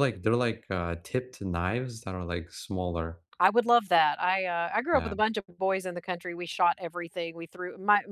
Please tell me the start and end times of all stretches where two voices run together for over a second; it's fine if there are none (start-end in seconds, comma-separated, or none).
none